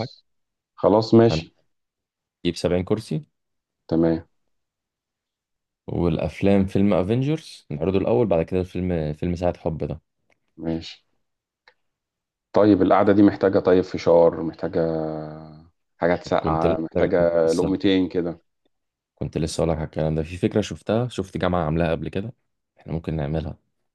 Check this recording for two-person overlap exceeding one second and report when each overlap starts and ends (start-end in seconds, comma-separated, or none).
16.4-17.7